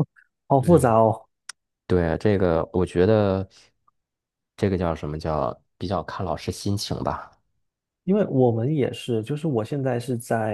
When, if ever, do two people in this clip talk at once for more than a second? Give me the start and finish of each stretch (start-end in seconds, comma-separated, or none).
none